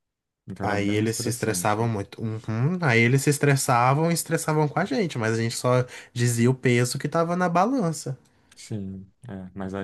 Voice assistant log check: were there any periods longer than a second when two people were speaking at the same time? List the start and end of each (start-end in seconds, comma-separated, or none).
0.7-1.9